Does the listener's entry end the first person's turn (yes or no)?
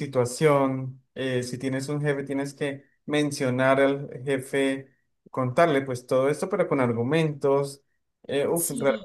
no